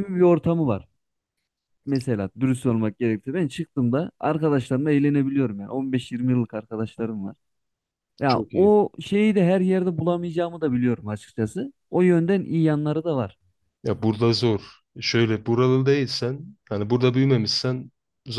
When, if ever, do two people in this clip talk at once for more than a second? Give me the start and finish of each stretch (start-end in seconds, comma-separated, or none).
none